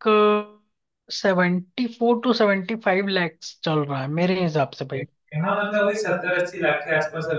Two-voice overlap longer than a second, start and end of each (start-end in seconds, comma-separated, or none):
none